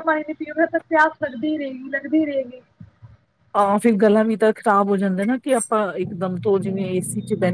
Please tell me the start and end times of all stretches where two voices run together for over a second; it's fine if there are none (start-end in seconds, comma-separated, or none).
none